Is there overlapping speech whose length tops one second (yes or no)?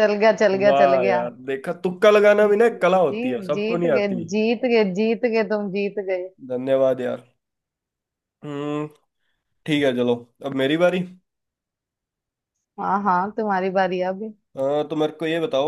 yes